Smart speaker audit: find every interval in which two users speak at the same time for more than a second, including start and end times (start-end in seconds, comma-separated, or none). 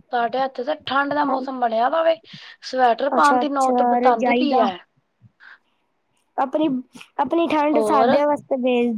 3.2-4.7